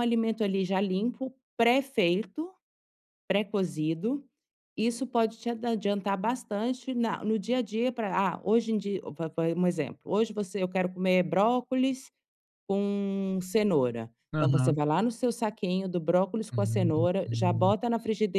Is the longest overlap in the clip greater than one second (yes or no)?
yes